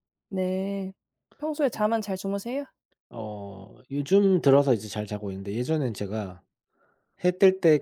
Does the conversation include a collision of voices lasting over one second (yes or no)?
no